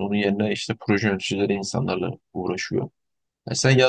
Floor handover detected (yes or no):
no